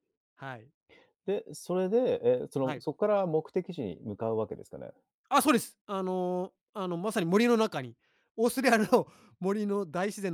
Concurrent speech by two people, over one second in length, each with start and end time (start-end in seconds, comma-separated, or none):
none